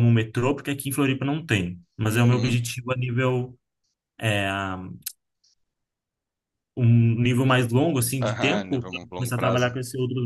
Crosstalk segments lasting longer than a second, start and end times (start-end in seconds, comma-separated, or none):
8.2-9.7